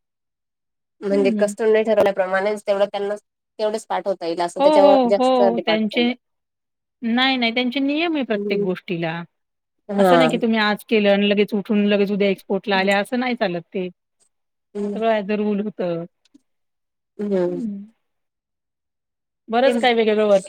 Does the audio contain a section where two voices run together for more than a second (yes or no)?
no